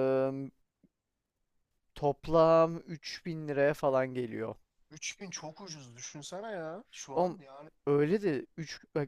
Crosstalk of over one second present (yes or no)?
no